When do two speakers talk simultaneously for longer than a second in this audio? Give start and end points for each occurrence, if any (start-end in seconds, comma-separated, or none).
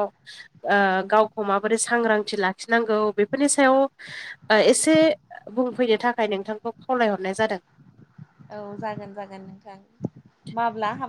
none